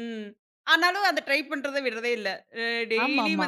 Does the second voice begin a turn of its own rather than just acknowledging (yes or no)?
no